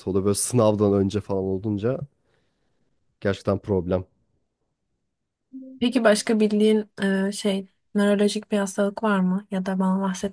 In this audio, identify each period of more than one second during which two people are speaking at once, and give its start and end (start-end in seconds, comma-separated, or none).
none